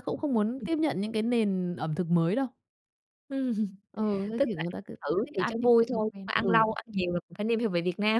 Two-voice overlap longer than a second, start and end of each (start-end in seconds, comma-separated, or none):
4.4-6.6